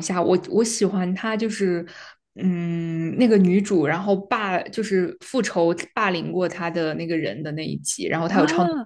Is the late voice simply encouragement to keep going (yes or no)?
no